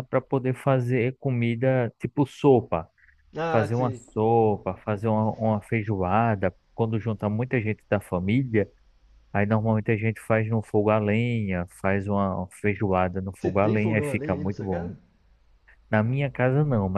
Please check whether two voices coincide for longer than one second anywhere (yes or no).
yes